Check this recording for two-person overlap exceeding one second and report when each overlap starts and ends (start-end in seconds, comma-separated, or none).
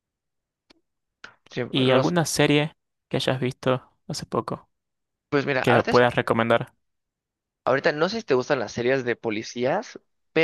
none